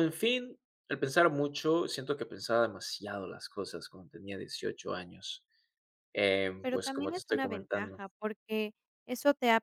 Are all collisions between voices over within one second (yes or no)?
no